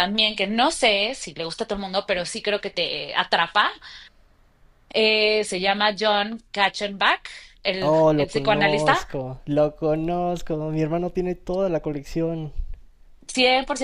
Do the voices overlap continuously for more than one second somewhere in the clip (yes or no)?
yes